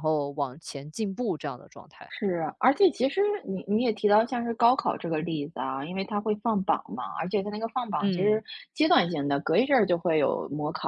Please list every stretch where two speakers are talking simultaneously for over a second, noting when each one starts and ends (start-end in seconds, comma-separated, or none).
none